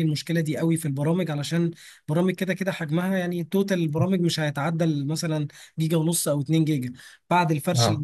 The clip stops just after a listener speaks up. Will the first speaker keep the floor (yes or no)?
yes